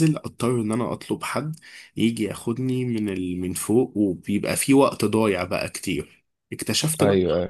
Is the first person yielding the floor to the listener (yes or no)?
no